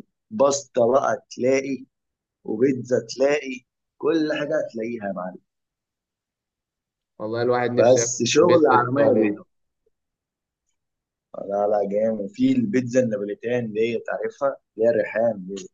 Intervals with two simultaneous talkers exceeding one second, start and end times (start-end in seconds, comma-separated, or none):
7.8-9.4